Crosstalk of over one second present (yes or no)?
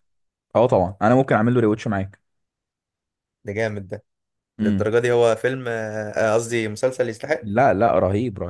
no